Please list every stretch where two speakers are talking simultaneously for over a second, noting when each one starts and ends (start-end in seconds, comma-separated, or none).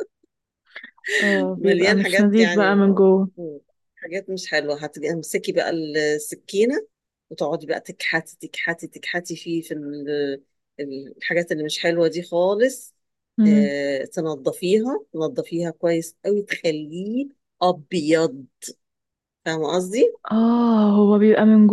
1.6-2.9